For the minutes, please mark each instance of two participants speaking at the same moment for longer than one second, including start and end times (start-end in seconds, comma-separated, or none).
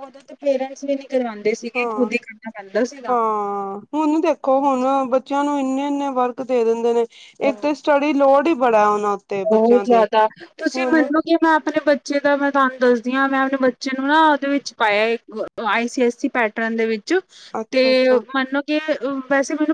none